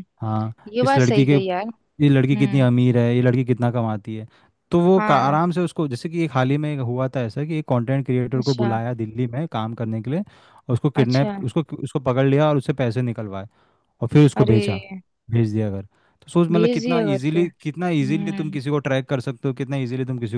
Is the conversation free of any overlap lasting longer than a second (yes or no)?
no